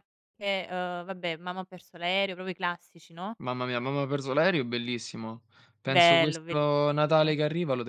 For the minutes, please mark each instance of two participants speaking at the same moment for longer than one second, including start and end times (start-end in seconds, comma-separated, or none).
5.8-7.4